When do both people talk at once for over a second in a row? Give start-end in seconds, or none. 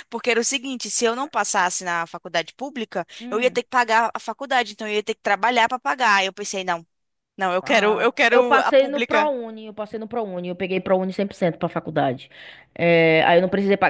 7.6-9.3